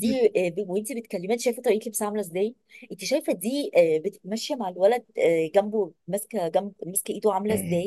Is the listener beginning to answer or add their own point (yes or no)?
yes